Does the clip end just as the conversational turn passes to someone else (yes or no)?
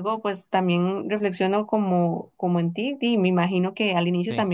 no